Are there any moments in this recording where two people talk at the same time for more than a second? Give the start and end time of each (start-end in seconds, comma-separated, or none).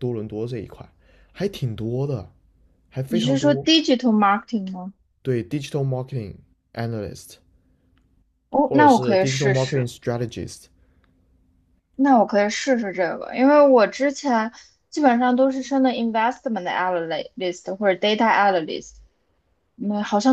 8.7-9.9